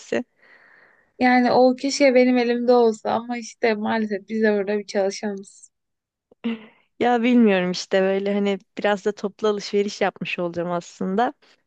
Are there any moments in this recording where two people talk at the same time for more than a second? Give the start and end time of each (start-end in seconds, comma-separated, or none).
none